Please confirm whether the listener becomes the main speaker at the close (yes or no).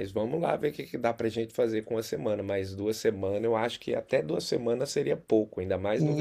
yes